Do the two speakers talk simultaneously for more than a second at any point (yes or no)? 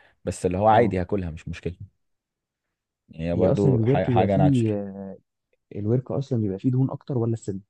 yes